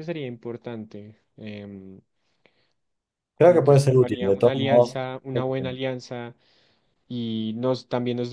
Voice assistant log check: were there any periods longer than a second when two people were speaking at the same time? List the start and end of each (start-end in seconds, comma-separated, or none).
3.4-5.8